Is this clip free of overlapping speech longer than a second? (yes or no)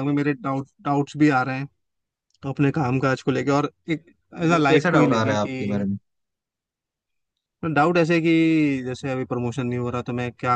no